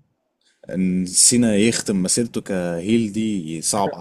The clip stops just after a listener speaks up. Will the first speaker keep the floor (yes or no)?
no